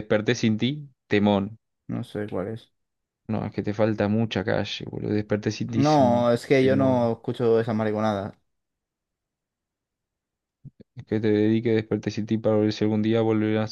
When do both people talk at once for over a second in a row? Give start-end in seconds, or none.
5.7-7.1